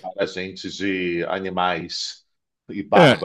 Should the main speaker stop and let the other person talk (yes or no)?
yes